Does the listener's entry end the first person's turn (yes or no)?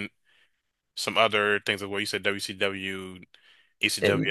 no